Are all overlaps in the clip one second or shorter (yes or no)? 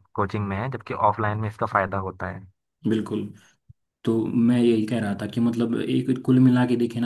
yes